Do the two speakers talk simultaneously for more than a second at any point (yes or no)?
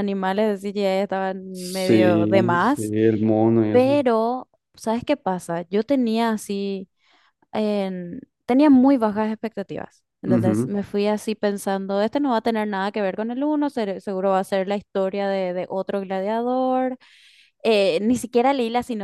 yes